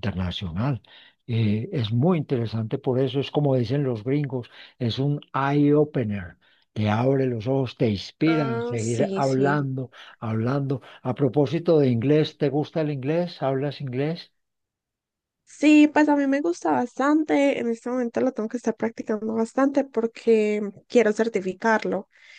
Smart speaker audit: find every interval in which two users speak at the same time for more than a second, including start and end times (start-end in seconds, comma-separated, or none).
8.2-9.6